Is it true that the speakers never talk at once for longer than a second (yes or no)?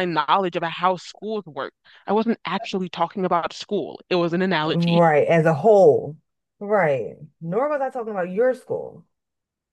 yes